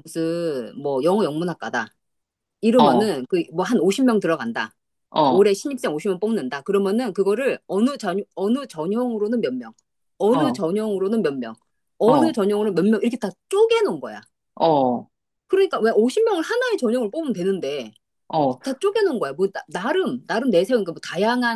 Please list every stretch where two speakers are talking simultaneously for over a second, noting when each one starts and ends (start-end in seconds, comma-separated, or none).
none